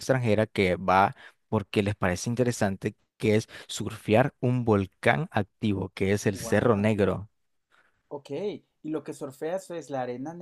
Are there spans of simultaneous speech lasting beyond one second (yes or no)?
no